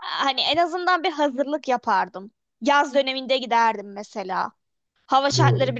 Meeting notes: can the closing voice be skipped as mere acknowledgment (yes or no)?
yes